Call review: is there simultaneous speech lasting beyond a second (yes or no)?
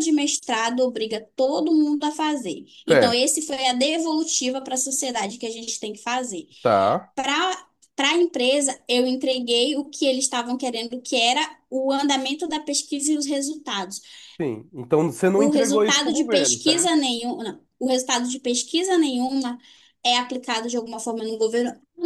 yes